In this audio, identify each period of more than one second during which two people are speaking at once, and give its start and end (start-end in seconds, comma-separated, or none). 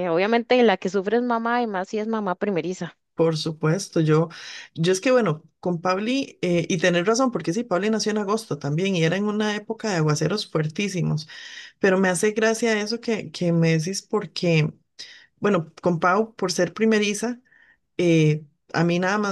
none